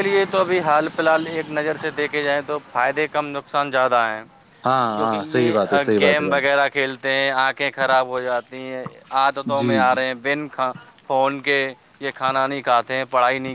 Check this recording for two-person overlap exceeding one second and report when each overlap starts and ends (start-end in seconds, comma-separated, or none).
5.0-6.5